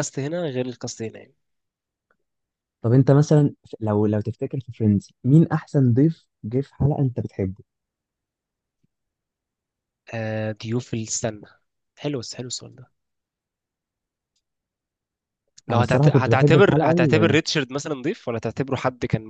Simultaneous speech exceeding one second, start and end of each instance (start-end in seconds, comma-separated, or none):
15.7-16.9